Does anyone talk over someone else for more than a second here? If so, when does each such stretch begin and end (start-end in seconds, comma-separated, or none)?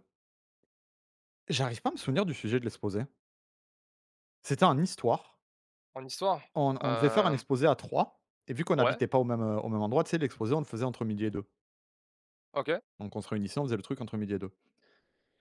none